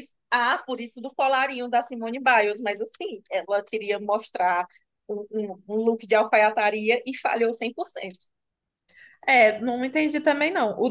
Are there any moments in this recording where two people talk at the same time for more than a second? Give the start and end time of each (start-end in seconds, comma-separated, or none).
none